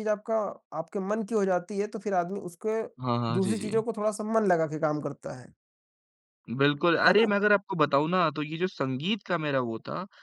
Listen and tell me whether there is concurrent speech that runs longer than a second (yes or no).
no